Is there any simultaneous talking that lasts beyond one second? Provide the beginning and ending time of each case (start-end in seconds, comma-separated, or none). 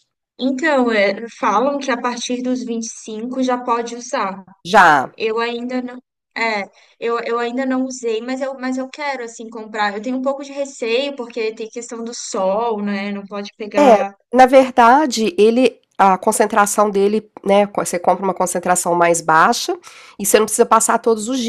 none